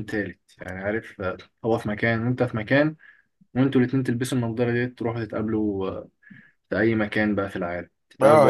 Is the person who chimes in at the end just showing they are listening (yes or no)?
no